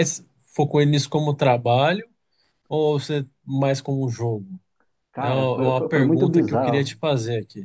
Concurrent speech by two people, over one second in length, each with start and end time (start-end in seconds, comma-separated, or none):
5.2-7.0